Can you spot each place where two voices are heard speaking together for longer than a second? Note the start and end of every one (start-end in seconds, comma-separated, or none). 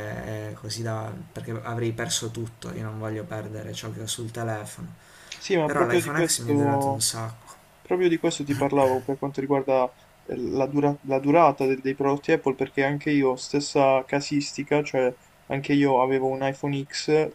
5.6-7.1